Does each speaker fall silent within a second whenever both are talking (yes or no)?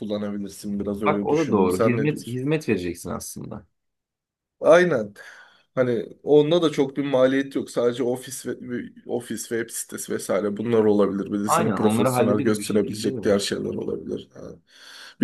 no